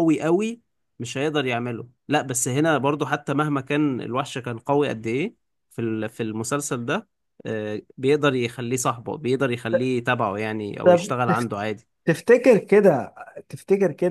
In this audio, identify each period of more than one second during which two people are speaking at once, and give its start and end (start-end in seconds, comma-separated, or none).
none